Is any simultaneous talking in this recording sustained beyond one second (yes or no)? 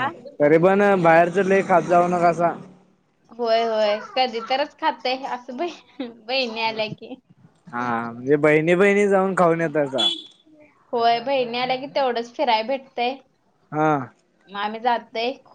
no